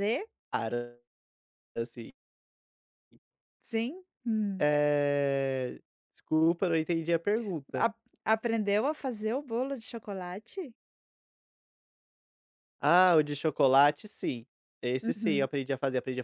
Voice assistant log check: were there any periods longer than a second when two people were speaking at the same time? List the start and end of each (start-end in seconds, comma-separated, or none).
none